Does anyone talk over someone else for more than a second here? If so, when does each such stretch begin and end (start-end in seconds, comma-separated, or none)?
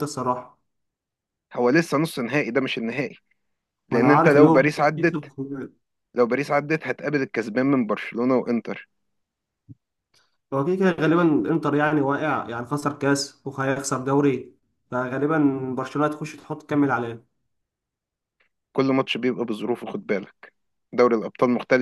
3.9-5.3